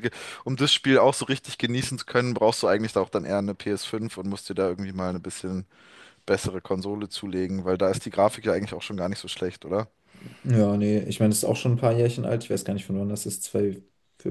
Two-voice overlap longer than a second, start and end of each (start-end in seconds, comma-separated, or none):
none